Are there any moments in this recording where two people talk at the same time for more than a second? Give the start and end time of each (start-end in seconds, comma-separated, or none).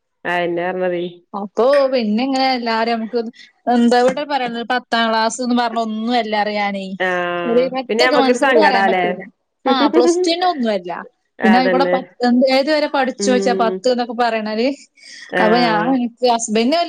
7.5-9.0